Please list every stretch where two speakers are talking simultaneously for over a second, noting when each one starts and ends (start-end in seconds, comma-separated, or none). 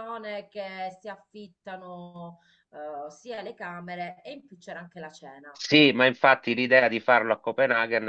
none